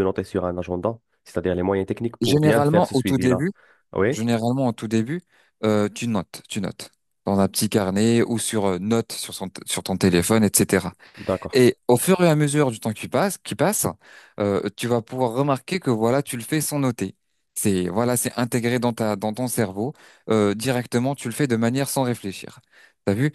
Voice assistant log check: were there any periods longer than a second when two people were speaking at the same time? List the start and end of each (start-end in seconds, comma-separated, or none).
2.2-3.5